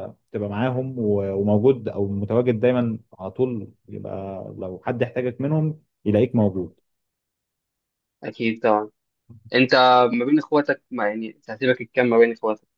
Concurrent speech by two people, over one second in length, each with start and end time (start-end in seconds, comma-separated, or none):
none